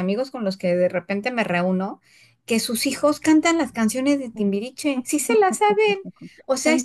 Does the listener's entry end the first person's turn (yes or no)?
no